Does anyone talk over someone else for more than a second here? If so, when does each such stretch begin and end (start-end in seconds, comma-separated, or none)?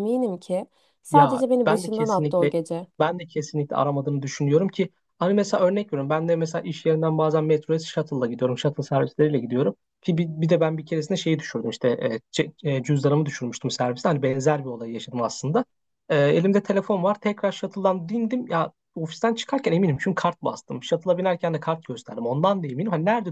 1.1-2.5